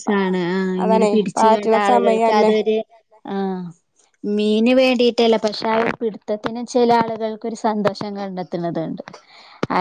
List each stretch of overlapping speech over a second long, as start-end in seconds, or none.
0.8-2.5